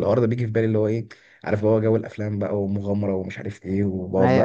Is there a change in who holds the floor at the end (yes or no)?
yes